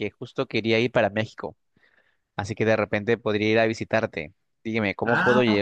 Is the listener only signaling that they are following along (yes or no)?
yes